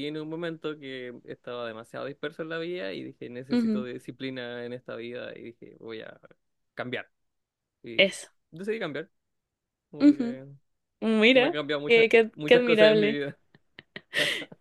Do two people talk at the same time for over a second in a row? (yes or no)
yes